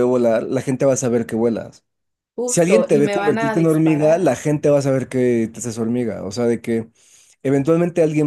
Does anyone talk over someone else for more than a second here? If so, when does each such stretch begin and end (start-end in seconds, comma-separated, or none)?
2.5-4.4